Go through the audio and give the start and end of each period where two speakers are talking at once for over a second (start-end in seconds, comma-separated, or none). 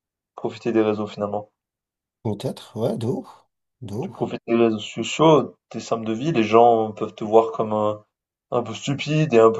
none